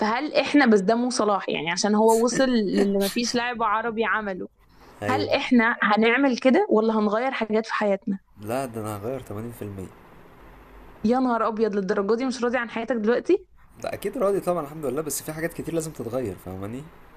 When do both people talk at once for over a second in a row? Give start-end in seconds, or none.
none